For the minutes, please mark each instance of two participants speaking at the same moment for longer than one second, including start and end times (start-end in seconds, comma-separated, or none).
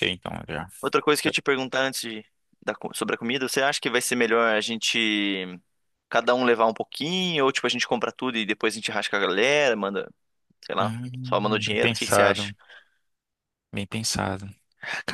10.8-12.5